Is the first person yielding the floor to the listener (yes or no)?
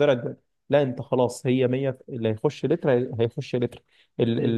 no